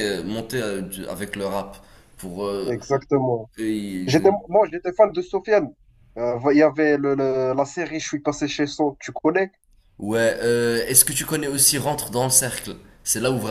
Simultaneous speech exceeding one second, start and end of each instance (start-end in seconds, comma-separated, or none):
none